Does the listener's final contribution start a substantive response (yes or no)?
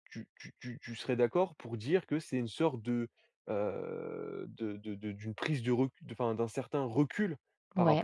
no